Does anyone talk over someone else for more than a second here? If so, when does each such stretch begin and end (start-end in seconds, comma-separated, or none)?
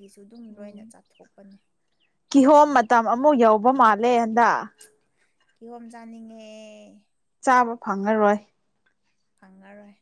none